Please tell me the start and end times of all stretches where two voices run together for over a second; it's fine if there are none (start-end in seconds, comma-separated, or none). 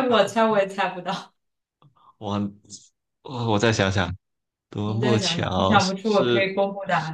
4.8-6.5